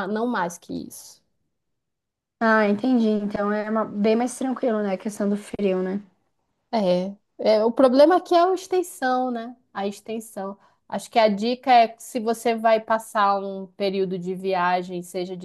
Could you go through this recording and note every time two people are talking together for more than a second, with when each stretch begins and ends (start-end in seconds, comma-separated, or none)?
none